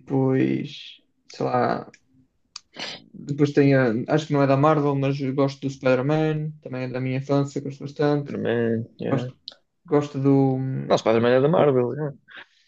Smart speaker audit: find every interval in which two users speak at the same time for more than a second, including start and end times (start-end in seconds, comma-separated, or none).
none